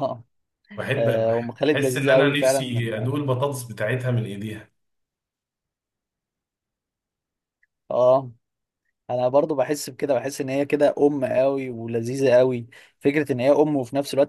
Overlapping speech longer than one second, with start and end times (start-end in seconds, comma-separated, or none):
1.0-2.9